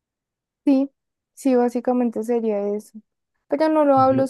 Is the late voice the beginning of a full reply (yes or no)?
no